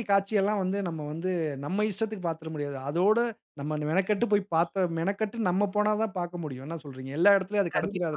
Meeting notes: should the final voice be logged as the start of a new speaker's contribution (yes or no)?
yes